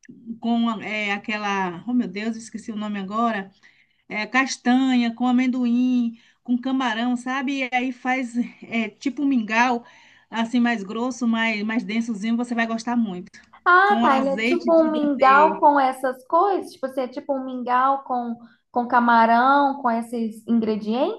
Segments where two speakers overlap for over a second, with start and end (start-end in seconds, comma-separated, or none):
13.8-15.6